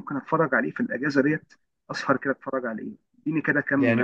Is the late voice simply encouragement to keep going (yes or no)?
no